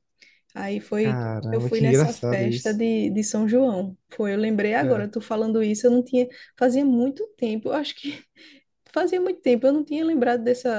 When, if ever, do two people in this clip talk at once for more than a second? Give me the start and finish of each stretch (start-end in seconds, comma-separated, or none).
1.0-2.8